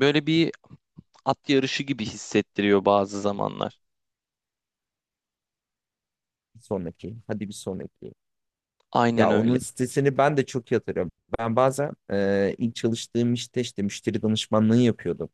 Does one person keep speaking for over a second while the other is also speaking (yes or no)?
no